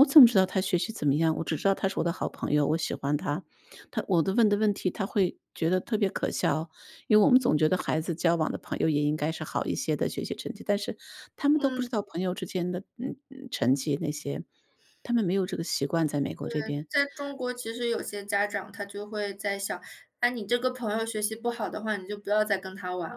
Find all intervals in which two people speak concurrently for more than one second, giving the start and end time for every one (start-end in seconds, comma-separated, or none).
none